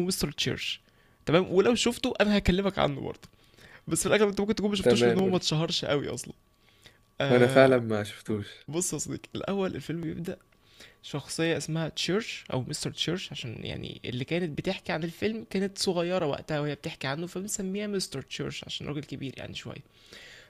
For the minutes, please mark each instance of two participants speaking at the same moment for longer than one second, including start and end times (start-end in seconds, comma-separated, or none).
none